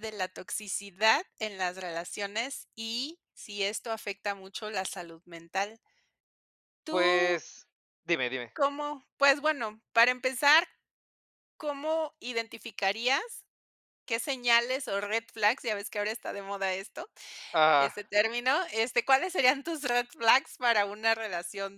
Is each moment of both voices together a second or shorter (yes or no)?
yes